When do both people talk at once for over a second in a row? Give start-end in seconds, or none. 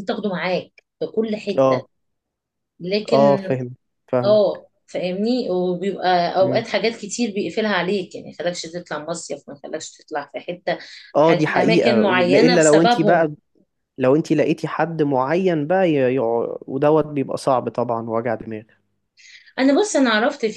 11.2-13.3